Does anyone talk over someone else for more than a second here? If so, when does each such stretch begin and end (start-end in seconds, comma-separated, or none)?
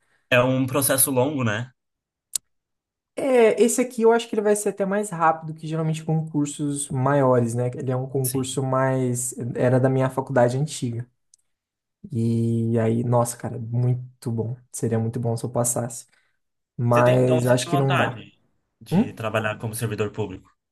16.9-18.2